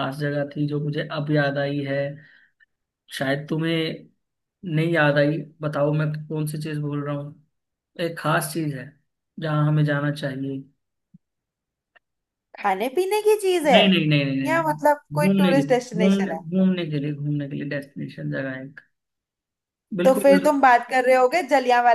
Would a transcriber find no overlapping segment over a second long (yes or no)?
no